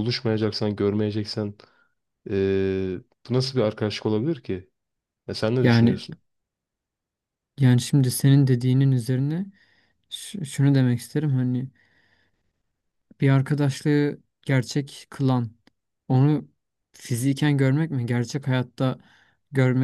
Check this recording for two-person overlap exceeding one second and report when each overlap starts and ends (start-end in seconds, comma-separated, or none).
none